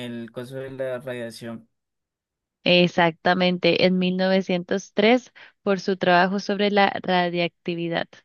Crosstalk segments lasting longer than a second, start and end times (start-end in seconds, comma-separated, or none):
none